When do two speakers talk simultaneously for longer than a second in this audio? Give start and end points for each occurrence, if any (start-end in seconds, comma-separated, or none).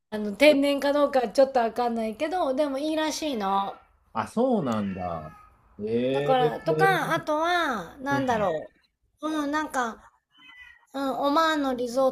none